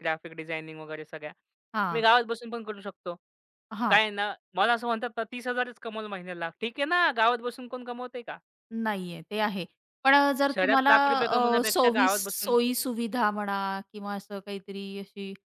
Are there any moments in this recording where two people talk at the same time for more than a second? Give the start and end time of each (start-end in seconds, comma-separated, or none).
10.5-12.6